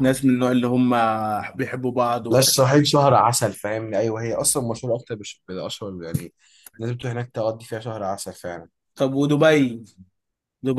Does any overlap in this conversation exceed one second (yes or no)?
no